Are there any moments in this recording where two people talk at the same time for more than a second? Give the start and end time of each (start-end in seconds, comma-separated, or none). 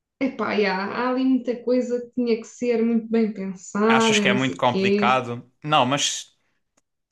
3.9-5.2